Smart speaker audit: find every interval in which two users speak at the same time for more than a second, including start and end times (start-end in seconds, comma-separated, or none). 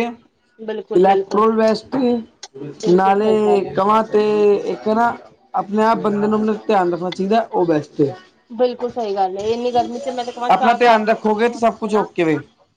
10.5-12.1